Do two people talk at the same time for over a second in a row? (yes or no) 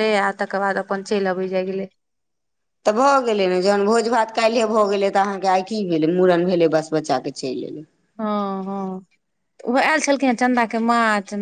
no